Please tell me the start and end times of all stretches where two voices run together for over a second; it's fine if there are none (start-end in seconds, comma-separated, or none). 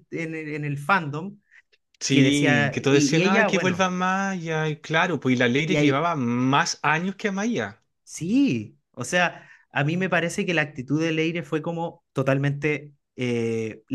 2.1-3.9